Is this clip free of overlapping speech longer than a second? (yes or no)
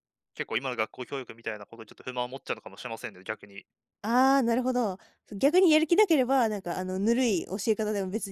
yes